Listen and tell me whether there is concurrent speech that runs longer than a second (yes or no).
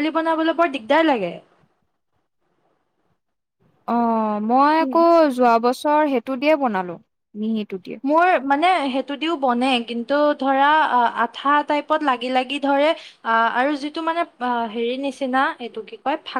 no